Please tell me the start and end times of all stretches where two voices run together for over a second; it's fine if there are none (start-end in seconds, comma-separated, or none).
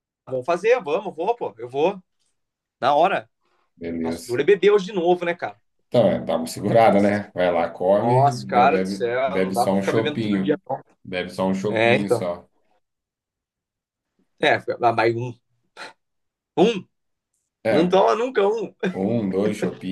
7.9-10.6